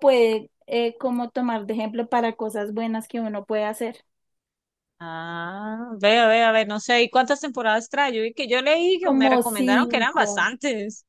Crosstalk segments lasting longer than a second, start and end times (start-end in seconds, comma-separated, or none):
9.0-10.5